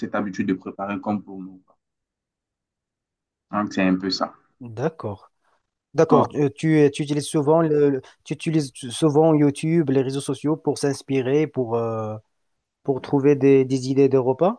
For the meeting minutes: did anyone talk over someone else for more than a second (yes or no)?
no